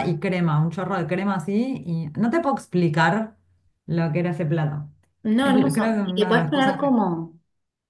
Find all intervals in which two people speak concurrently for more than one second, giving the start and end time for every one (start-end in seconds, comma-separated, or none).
5.4-6.8